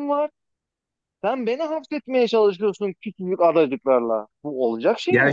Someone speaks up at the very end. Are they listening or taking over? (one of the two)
taking over